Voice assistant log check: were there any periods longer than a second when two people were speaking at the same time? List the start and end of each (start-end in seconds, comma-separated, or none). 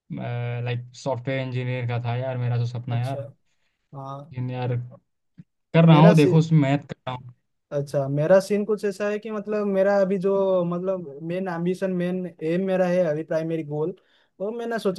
none